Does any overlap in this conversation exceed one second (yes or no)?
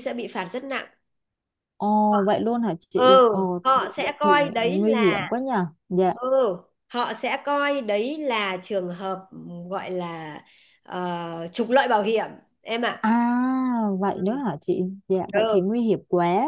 yes